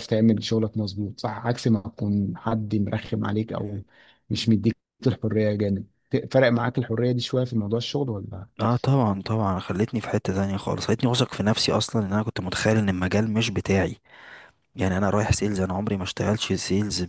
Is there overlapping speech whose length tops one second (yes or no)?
no